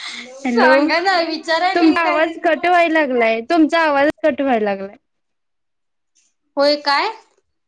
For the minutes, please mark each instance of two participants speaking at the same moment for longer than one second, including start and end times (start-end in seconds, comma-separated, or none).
1.3-3.2